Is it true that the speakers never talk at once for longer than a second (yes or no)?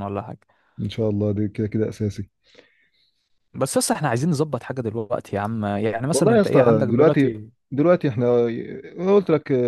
no